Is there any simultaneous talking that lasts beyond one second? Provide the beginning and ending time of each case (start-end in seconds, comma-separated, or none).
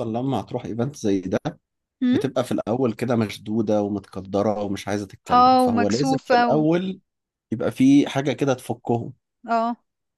5.3-6.6